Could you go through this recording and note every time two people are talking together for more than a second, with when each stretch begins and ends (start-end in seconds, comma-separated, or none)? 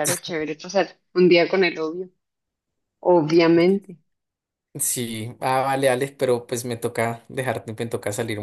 none